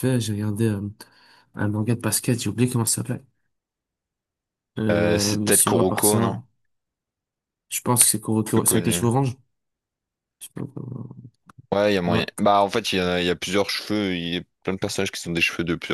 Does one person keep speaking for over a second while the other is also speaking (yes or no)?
yes